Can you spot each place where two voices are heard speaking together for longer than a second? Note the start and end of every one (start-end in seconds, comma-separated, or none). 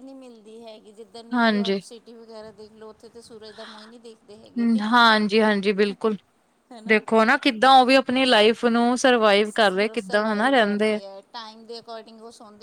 9.4-11.0